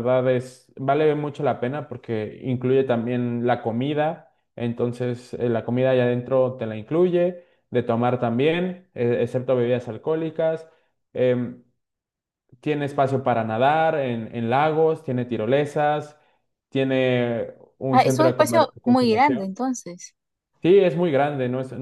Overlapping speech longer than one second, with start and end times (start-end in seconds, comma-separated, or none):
17.9-19.6